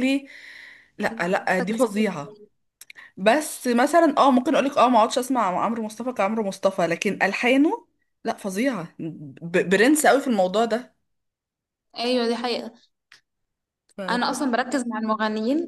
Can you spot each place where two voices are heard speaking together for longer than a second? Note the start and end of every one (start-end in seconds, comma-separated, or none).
1.1-2.4